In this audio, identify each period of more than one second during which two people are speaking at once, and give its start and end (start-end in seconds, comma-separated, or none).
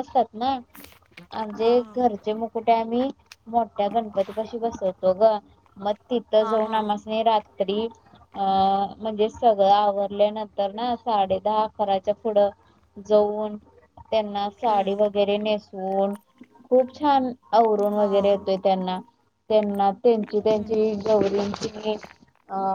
none